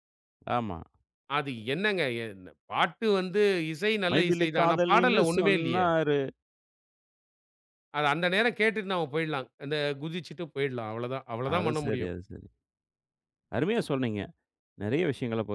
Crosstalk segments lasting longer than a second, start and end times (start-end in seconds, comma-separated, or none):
4.1-5.9